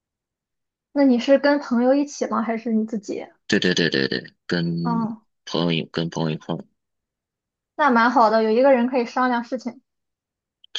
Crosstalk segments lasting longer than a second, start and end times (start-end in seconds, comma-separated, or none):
none